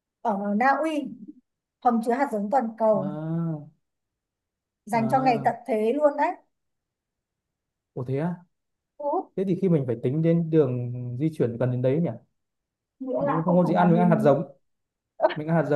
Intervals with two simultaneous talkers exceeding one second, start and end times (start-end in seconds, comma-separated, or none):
13.2-14.4